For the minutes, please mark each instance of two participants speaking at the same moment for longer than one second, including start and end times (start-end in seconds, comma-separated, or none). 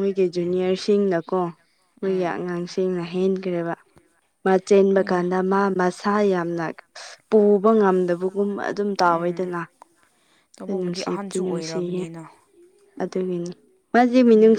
10.7-12.0